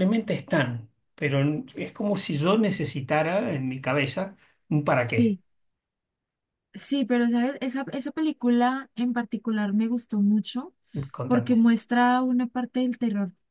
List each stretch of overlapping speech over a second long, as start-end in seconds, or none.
none